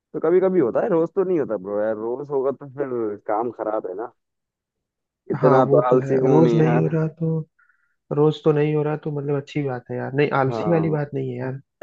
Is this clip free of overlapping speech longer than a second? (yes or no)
no